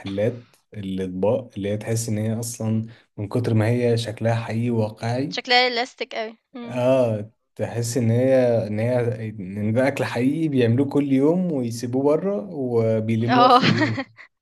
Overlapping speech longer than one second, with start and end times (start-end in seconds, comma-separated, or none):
none